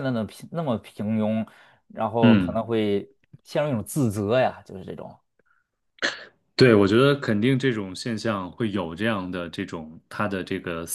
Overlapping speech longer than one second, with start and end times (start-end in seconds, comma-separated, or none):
none